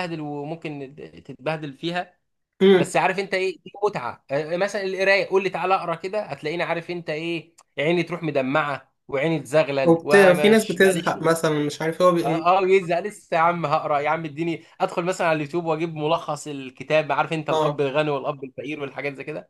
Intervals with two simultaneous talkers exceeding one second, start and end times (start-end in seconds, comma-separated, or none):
9.8-11.3